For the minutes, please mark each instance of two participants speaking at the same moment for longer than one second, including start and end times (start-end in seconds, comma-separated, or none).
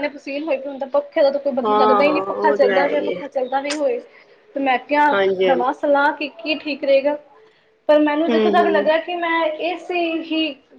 1.6-3.2